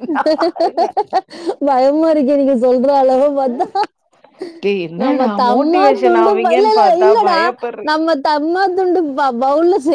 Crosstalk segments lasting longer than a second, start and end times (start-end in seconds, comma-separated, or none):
5.0-7.4